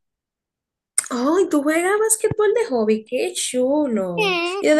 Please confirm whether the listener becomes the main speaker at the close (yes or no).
yes